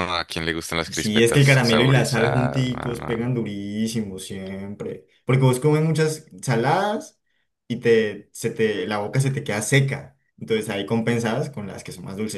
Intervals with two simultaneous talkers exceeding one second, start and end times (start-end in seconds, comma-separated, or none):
0.9-3.1